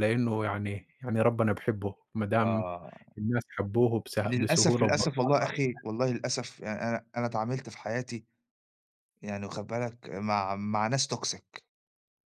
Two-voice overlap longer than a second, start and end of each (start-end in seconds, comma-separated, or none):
4.3-5.6